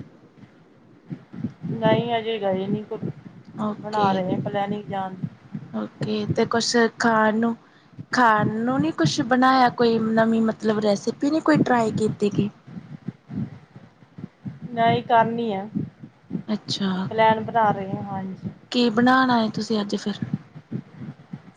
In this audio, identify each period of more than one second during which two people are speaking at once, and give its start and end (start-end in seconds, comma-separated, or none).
none